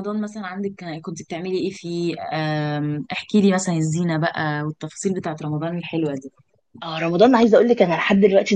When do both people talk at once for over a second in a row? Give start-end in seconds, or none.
none